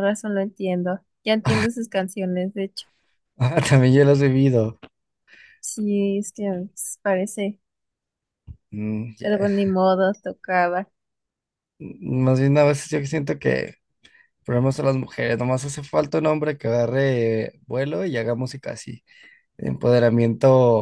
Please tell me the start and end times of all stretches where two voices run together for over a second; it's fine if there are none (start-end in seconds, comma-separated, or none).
none